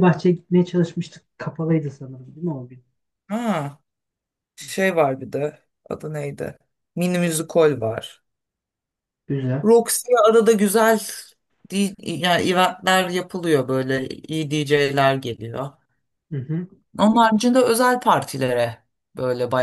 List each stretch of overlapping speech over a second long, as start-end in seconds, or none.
none